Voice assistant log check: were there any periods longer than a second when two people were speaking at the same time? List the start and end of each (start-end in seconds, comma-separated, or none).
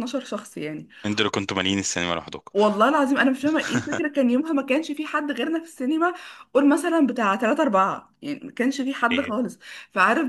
none